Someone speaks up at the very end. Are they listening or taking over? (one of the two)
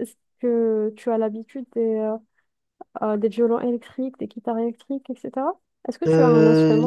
taking over